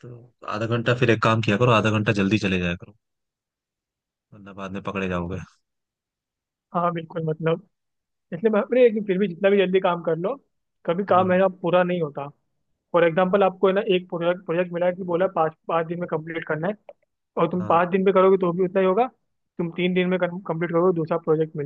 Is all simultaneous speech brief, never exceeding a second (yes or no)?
yes